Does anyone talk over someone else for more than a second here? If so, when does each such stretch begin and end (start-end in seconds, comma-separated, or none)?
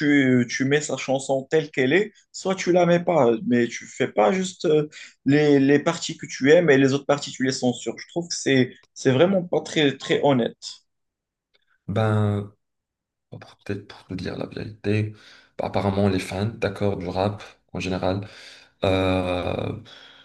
none